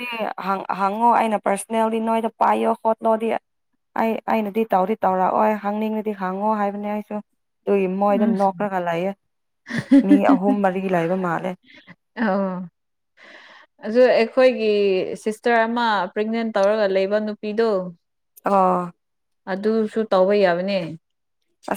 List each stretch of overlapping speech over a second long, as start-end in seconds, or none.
none